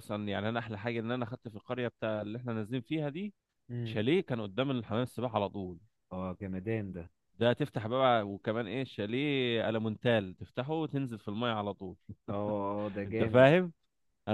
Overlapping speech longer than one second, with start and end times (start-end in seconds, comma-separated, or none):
none